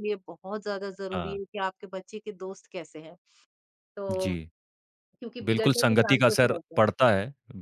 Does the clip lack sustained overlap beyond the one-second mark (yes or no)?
no